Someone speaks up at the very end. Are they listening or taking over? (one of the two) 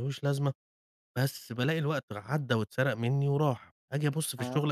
listening